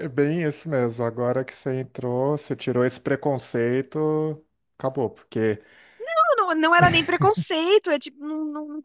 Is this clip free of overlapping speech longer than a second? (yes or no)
yes